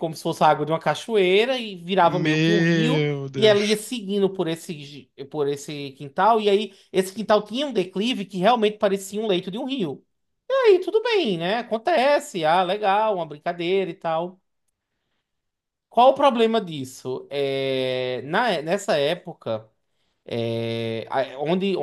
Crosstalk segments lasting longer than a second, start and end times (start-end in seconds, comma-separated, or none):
2.0-3.8